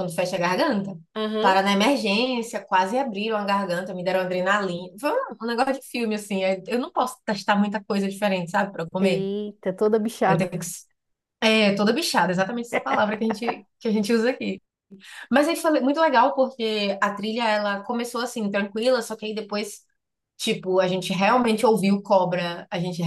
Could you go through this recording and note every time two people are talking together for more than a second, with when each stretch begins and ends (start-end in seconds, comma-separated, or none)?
none